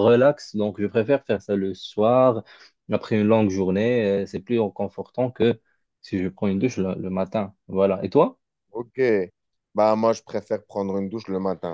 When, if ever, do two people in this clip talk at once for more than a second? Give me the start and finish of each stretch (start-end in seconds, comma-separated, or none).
none